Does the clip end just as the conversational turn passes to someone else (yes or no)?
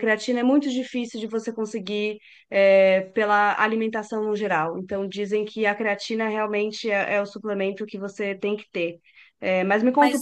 no